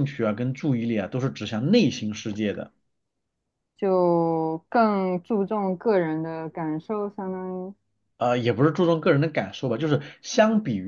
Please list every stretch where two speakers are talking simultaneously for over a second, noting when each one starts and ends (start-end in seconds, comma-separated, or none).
none